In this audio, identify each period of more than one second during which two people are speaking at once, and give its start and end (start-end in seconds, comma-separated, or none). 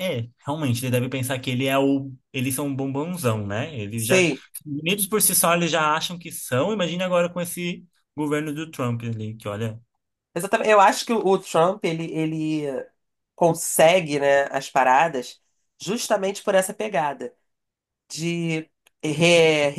none